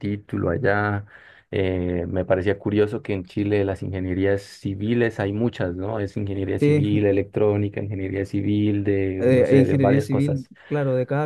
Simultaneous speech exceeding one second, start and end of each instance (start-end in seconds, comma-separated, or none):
9.2-10.5